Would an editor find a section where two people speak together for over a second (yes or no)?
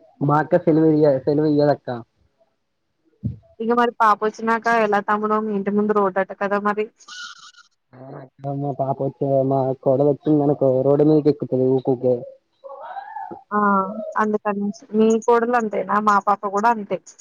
no